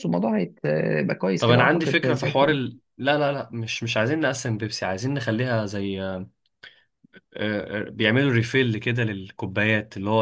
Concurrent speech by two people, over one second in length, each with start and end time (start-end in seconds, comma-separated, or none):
1.4-2.6